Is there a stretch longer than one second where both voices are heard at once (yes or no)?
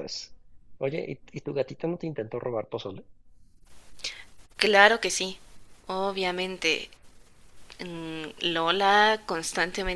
no